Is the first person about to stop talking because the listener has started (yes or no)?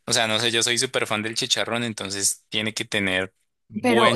yes